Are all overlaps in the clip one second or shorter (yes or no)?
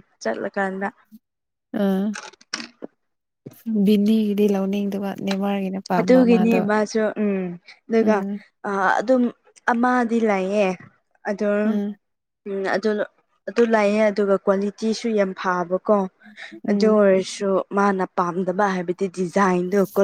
yes